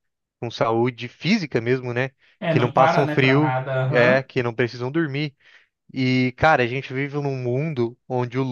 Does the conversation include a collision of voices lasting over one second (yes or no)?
yes